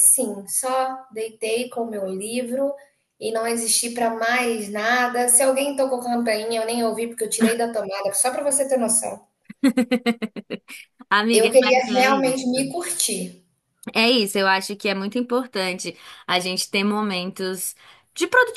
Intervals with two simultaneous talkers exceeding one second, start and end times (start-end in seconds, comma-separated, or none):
11.3-12.6